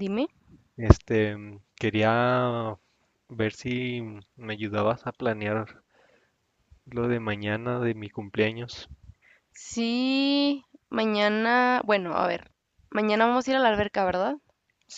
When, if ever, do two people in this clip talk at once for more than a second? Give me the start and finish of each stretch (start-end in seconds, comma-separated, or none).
none